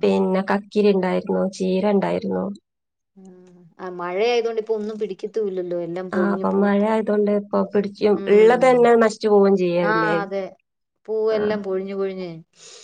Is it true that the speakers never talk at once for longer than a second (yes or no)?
yes